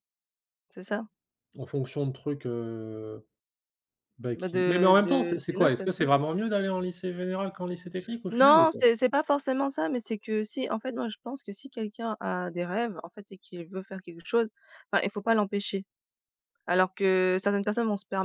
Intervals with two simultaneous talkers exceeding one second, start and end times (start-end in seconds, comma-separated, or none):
4.3-5.9